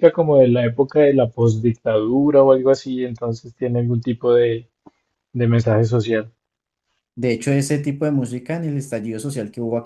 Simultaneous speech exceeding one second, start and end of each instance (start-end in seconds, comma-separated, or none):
none